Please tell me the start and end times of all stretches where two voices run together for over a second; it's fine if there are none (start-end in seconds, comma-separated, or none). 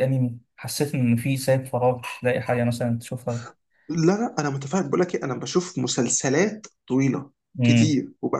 none